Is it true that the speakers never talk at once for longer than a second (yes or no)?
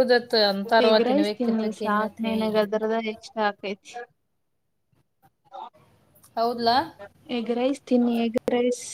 no